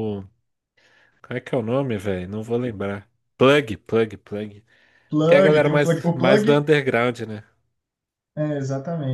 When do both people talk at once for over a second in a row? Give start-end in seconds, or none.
5.3-6.6